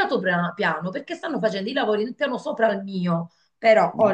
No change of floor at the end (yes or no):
yes